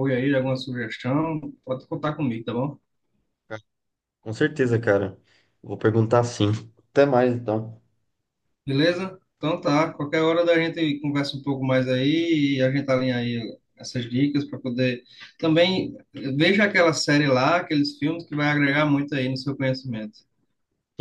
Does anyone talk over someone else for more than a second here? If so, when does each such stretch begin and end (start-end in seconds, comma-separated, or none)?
none